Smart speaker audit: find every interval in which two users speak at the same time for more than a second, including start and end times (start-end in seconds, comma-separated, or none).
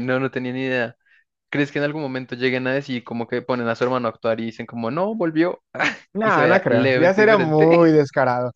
6.2-7.8